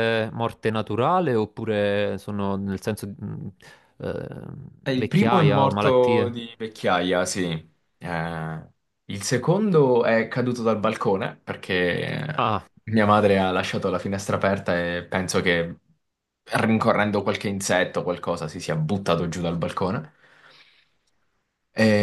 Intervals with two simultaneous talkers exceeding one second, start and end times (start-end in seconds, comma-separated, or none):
4.9-6.4